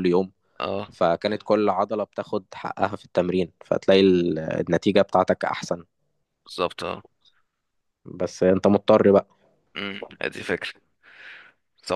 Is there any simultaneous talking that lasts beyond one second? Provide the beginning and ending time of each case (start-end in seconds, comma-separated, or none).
none